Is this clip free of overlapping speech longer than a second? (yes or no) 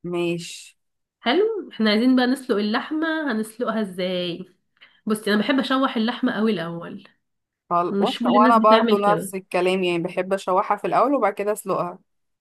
no